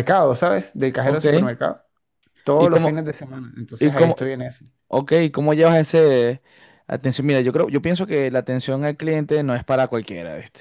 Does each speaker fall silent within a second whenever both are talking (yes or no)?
yes